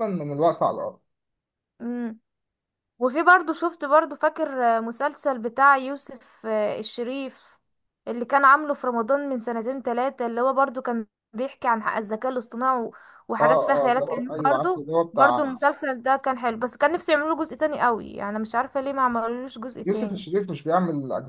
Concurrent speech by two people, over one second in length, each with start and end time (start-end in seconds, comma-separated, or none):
13.4-15.4